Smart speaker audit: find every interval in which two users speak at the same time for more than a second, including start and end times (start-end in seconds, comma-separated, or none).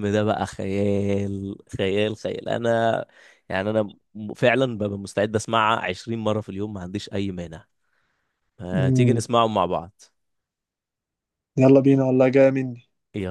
none